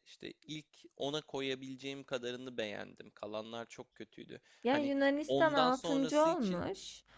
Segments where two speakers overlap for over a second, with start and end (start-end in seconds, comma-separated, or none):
4.6-6.6